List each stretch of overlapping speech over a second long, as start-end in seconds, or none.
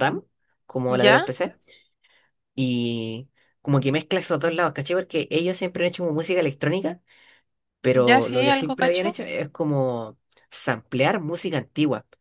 7.9-9.2